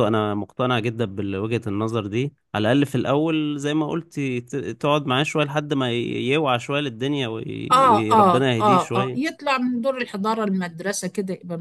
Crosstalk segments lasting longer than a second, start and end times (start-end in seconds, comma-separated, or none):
7.7-9.4